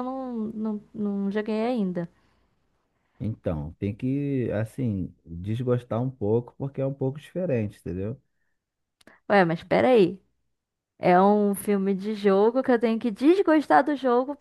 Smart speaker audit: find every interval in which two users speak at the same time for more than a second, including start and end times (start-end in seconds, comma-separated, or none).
none